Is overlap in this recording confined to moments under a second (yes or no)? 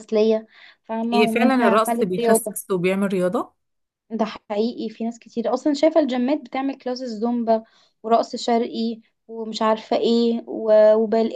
no